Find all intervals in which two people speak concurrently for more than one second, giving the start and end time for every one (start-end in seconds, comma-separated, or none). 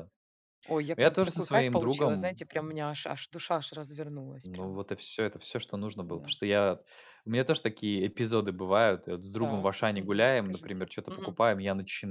0.9-2.5, 9.4-11.4